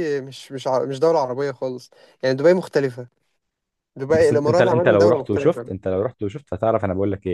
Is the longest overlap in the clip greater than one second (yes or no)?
yes